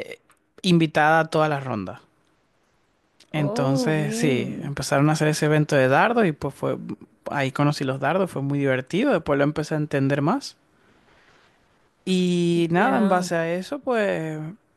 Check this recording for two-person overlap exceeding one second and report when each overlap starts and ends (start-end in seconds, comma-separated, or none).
3.4-4.7